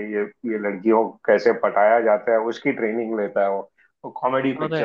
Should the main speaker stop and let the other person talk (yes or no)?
no